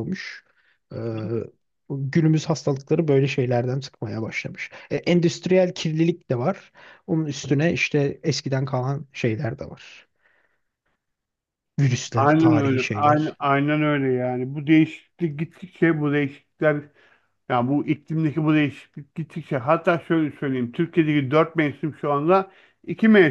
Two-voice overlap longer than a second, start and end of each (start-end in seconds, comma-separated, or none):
12.1-13.4